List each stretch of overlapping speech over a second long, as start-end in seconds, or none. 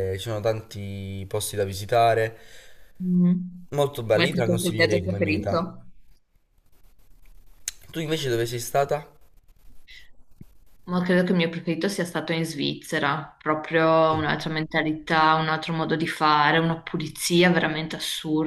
4.1-5.7